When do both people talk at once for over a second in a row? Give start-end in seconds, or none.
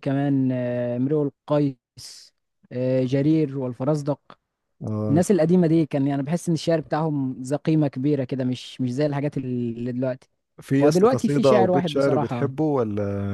10.8-12.5